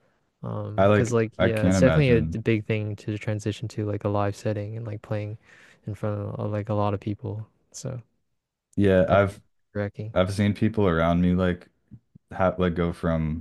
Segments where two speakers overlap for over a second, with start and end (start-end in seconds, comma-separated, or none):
0.8-2.4